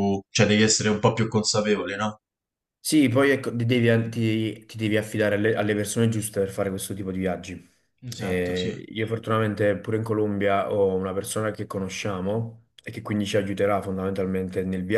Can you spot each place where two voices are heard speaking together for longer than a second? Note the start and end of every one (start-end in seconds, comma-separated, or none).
none